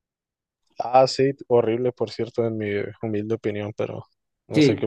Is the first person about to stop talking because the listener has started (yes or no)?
yes